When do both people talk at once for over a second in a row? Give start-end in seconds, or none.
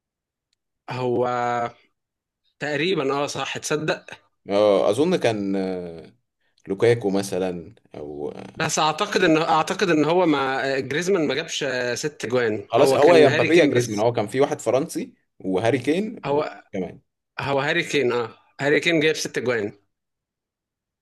12.7-14.0